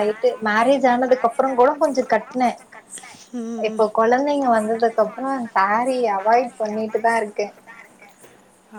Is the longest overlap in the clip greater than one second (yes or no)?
yes